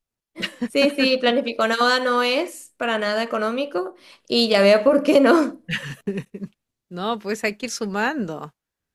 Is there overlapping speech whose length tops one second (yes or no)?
no